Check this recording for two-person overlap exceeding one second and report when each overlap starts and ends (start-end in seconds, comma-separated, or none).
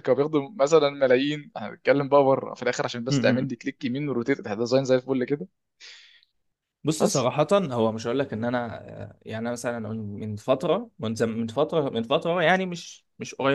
none